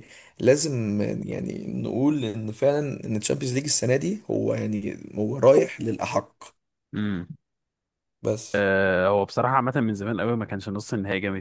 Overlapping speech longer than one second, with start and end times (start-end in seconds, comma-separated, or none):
none